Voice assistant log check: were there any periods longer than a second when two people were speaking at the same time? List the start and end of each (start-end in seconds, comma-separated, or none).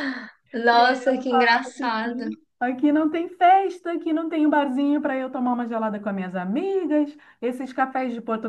0.7-2.2